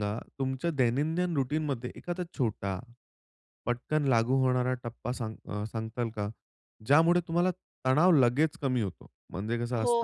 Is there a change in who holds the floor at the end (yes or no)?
yes